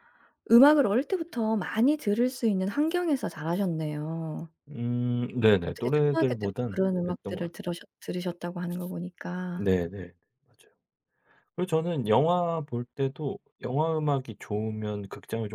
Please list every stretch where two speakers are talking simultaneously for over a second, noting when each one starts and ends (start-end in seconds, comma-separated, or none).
5.6-7.7